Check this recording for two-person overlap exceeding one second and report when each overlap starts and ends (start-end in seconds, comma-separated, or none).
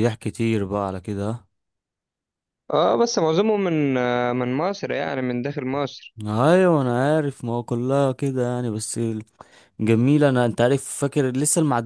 none